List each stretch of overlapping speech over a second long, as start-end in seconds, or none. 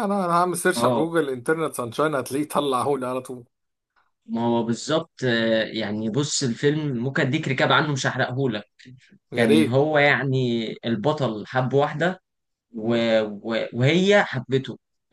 none